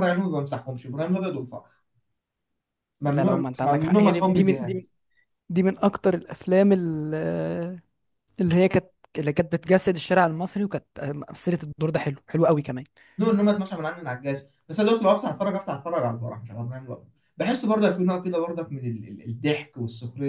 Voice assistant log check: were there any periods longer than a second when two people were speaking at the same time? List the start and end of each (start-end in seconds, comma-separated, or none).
3.1-4.8